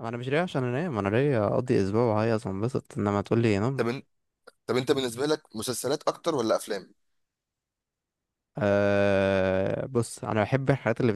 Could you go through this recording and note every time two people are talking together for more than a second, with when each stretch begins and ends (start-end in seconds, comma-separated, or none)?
none